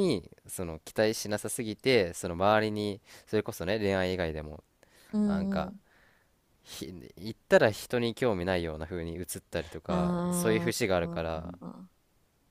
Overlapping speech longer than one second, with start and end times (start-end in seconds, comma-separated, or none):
9.9-11.6